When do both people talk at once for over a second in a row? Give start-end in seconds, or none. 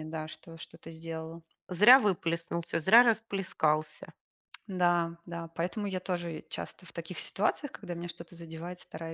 none